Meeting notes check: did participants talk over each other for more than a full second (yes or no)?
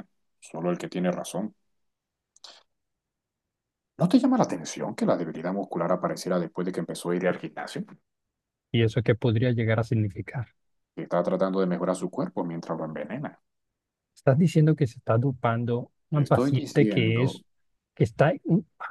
yes